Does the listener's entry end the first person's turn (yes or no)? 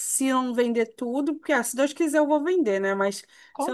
no